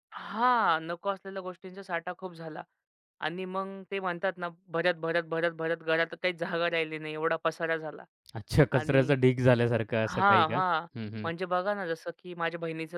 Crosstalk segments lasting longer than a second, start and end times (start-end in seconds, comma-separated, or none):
none